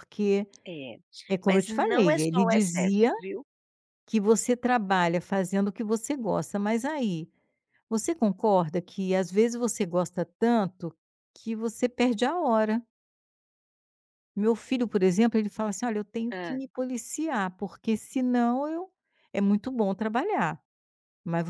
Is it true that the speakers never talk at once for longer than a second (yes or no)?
no